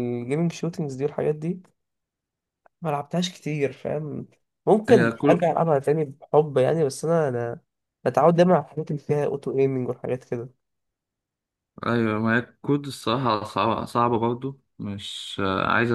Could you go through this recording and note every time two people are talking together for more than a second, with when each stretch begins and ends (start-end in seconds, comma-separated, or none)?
none